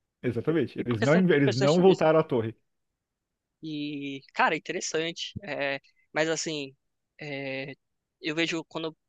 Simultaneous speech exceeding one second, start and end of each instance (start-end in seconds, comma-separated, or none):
0.8-2.3